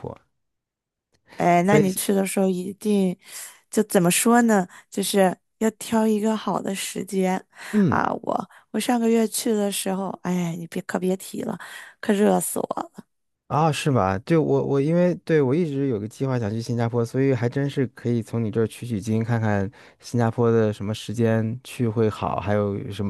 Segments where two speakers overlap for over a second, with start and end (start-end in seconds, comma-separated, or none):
none